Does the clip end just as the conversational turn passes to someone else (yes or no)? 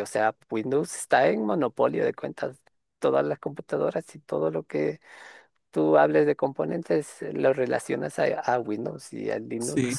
yes